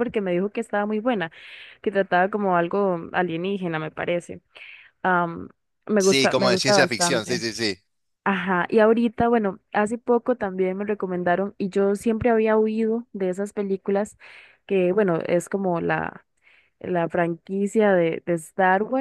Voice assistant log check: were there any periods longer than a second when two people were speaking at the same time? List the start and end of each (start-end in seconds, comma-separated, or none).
6.0-7.4